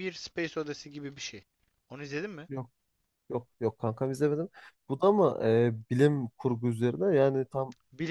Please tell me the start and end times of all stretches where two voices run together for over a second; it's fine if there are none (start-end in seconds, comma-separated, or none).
none